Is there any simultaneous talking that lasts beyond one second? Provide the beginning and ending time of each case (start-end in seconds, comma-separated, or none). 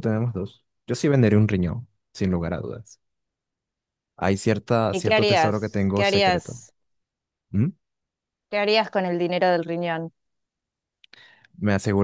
4.9-6.6